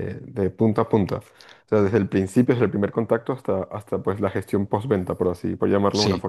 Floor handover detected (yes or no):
yes